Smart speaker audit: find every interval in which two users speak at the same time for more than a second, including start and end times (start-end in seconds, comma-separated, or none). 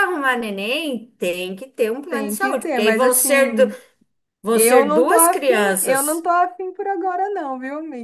2.1-3.7, 4.5-6.2